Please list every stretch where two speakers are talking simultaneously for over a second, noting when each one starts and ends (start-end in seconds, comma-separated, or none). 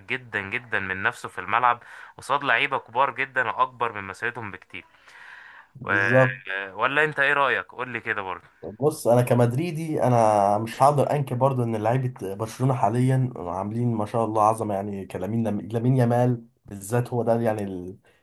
none